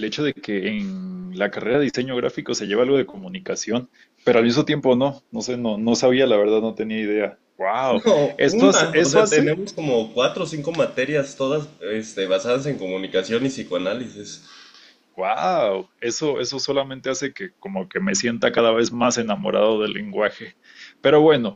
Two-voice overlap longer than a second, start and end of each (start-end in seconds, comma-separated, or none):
7.9-9.6